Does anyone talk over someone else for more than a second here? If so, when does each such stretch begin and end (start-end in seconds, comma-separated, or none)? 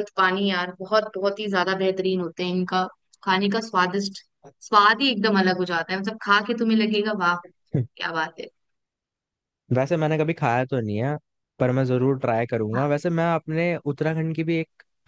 none